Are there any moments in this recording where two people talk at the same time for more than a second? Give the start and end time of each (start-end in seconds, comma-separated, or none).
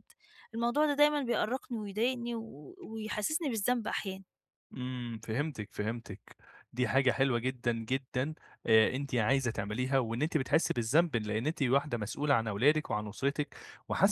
none